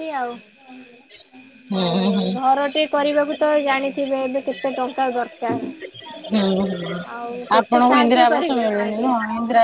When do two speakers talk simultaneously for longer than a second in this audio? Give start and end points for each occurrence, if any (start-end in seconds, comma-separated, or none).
7.6-9.1